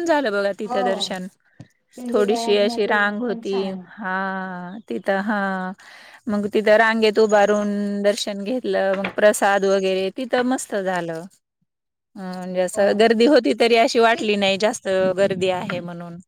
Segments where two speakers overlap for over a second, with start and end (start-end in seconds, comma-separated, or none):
2.1-3.5